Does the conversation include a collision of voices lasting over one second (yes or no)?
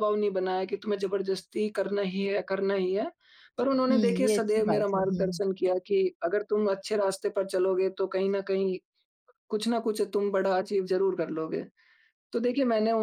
yes